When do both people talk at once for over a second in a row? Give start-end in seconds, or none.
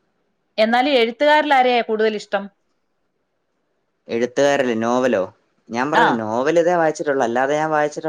none